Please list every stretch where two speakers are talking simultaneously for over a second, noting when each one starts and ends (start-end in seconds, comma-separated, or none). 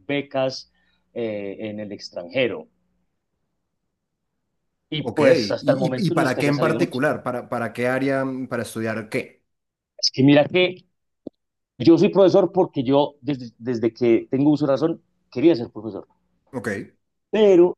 5.0-7.0